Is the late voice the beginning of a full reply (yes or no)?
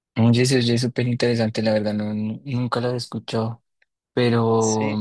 no